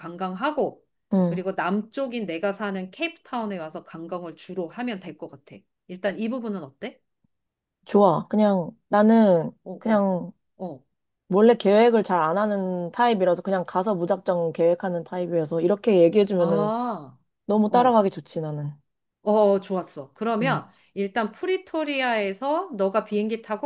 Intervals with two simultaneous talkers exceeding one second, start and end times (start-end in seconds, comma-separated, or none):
none